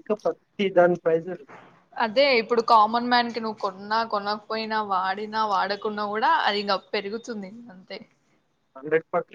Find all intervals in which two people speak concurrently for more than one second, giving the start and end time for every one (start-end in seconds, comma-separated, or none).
none